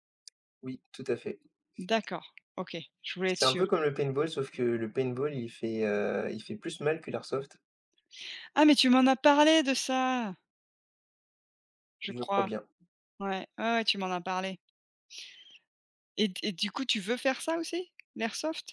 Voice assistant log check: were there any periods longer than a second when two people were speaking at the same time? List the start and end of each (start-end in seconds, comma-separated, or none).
none